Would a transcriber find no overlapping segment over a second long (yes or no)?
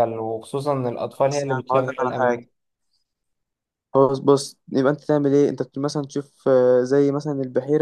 no